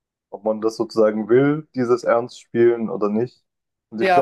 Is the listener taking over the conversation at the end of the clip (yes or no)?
no